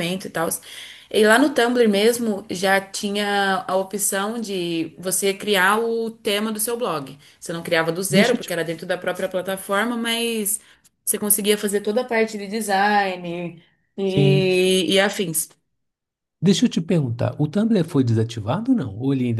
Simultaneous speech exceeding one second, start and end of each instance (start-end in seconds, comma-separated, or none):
none